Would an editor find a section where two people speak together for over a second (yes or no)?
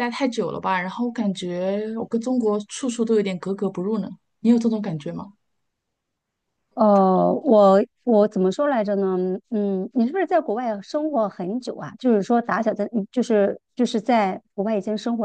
no